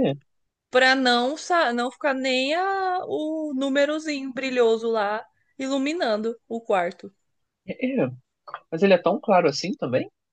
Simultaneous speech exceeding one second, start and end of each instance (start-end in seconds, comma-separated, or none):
none